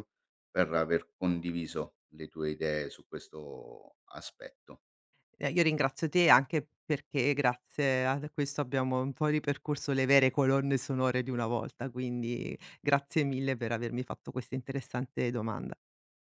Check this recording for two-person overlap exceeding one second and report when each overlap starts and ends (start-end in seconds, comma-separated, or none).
none